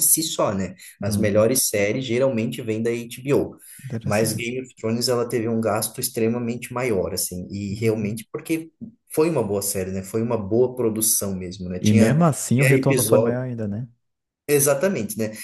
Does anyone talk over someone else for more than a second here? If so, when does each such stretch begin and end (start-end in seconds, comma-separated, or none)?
11.8-13.4